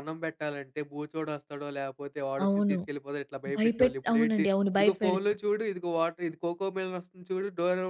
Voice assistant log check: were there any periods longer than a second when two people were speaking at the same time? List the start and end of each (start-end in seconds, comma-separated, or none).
3.6-5.3